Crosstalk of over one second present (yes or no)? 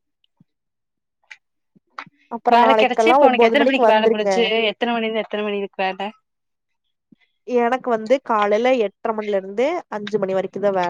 yes